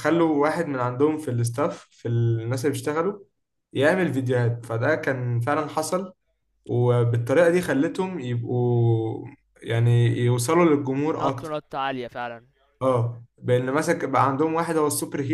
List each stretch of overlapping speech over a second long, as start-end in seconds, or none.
none